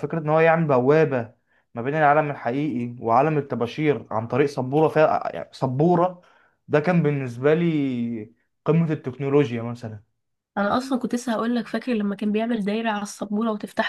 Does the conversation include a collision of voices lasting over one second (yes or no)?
no